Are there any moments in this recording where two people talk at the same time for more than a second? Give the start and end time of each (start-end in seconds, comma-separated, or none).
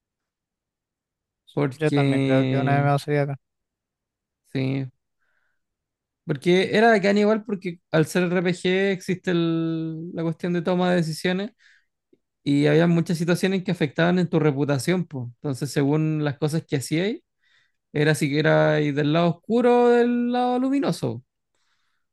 1.7-2.9